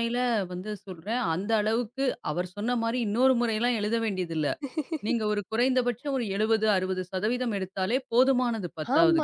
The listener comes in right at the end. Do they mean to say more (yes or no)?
yes